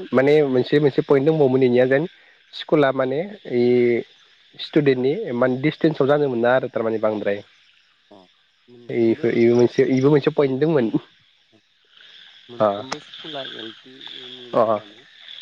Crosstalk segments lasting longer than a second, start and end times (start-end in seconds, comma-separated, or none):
none